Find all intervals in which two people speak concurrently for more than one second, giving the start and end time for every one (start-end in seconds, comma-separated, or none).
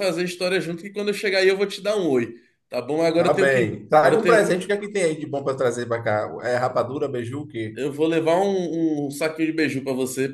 3.1-4.6